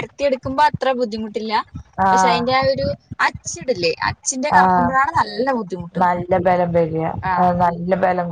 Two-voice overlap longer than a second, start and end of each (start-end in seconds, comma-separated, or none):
none